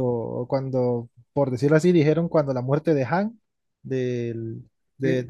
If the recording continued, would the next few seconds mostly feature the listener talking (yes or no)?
no